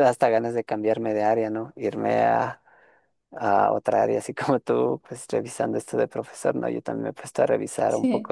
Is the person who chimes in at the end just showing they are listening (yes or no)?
yes